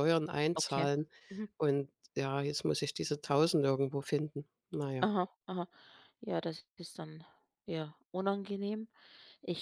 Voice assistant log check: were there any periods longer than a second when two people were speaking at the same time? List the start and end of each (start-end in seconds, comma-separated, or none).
none